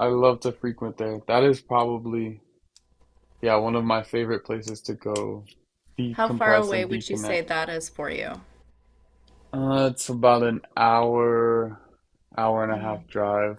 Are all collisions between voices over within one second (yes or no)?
no